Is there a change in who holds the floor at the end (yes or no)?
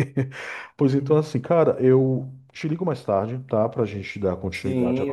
yes